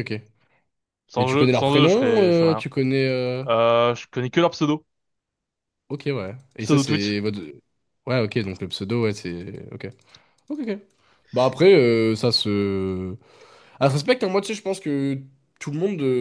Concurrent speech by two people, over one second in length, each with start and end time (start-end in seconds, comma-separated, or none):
1.2-2.6